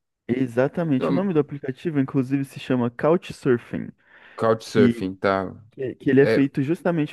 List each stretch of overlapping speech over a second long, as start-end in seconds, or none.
none